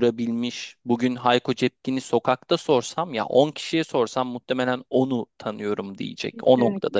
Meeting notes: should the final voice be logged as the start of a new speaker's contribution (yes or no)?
yes